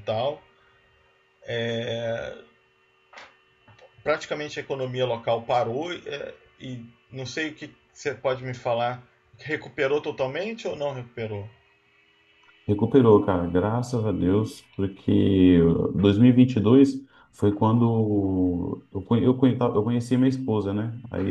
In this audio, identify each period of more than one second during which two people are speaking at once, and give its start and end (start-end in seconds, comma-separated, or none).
none